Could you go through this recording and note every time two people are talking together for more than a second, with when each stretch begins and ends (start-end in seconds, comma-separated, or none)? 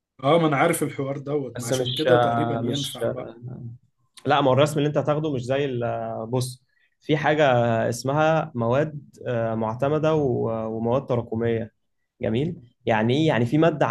1.6-3.4